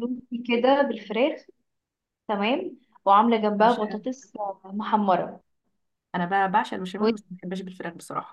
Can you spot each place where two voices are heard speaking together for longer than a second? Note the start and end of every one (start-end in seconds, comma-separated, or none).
none